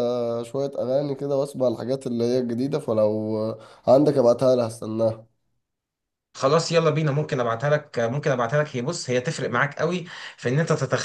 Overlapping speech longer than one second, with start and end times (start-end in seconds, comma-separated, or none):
none